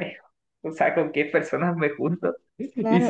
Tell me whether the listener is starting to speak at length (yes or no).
yes